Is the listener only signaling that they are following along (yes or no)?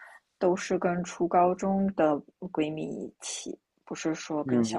no